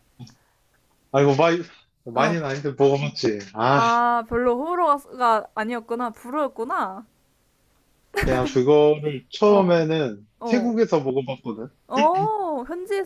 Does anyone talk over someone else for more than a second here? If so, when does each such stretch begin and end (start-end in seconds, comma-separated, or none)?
none